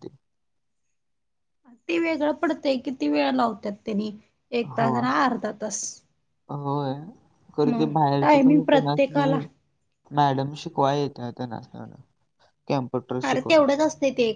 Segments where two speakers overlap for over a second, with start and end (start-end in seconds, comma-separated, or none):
7.7-9.4